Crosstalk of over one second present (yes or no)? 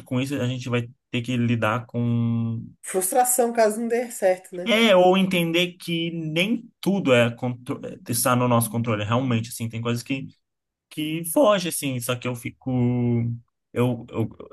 no